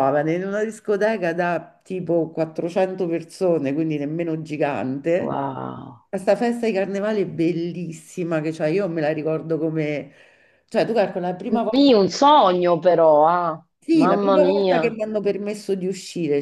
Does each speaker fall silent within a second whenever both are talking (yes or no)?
no